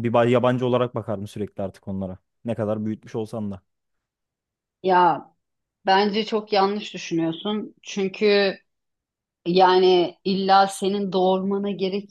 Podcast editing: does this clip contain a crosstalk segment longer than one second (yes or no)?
no